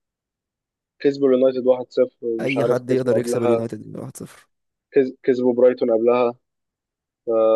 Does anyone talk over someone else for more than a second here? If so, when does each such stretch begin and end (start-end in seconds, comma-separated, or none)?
2.4-3.7